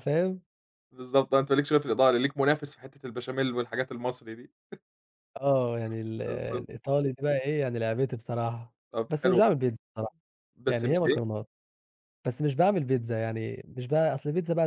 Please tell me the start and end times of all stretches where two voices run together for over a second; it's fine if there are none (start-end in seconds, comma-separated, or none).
none